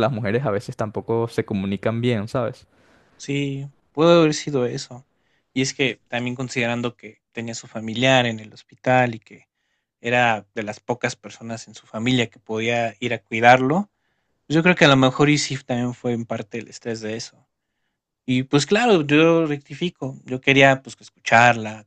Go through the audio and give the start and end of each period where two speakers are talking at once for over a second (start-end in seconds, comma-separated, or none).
none